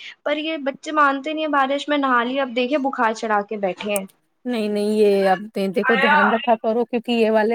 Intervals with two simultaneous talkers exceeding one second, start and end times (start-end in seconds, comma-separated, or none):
none